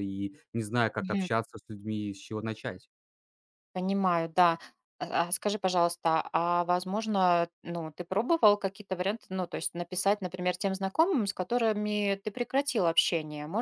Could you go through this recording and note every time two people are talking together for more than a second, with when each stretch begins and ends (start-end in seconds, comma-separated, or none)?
none